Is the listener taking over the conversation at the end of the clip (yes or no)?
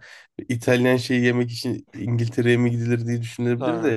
no